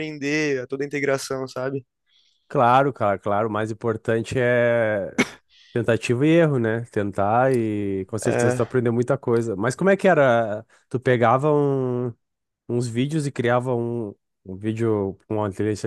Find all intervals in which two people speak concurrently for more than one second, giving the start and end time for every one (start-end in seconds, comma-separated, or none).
none